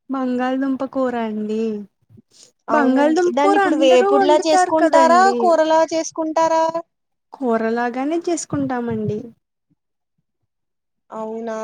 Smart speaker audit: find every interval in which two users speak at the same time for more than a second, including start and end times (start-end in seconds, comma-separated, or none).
2.8-5.4